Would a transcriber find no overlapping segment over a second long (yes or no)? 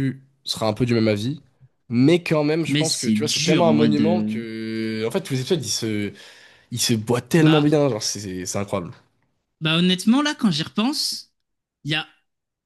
no